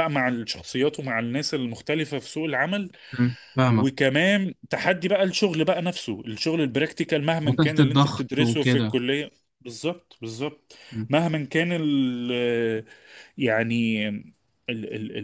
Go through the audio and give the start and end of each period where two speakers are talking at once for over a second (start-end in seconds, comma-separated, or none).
7.4-9.0